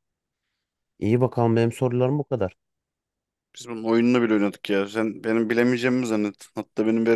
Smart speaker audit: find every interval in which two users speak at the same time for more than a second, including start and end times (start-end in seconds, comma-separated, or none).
none